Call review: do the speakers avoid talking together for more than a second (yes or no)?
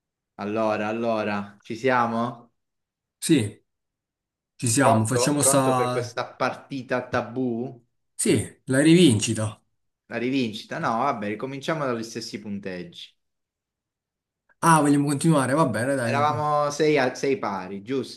no